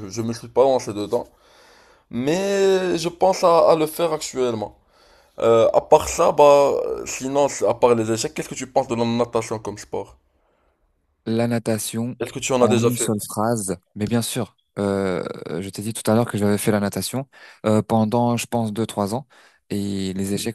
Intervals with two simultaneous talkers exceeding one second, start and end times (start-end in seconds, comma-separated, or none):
none